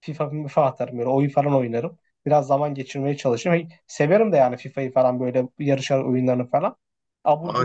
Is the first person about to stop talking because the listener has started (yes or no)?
yes